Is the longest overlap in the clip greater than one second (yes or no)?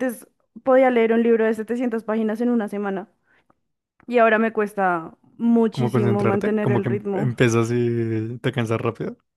yes